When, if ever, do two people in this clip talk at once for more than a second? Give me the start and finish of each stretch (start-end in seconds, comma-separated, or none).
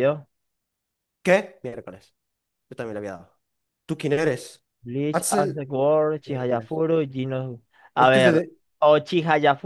none